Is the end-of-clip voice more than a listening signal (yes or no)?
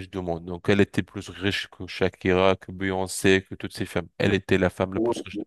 no